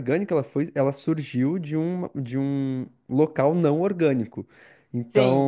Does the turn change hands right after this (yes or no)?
yes